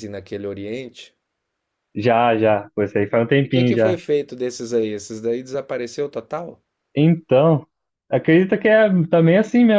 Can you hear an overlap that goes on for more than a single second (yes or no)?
no